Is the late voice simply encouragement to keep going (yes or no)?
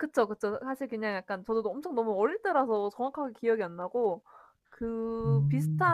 yes